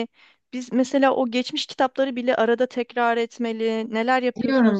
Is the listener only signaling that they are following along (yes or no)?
no